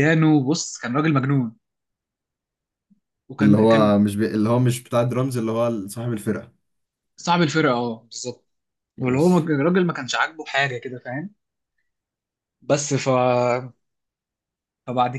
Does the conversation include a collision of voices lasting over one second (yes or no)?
no